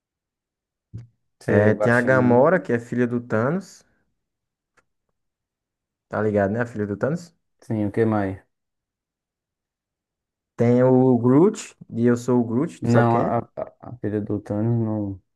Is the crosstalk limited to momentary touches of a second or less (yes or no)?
no